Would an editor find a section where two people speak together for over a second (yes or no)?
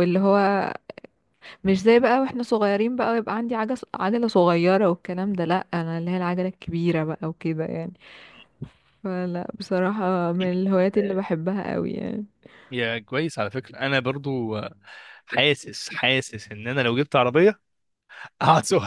no